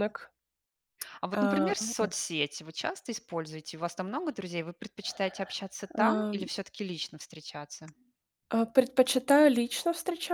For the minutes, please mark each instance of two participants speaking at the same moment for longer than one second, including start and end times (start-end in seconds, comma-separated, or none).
none